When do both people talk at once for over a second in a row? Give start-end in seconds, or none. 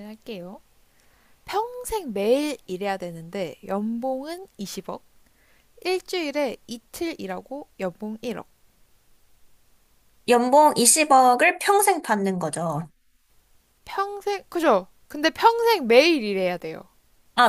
none